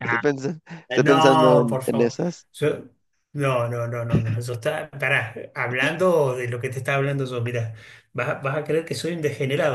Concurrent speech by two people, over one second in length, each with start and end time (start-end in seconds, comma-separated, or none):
0.9-2.1